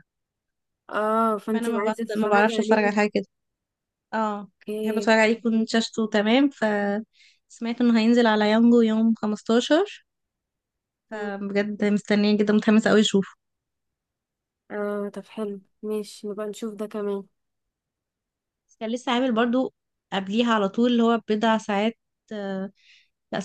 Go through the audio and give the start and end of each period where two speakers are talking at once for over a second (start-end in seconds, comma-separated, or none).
1.5-2.9